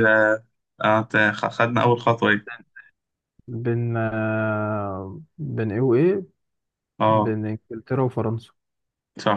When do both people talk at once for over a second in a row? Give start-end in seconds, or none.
none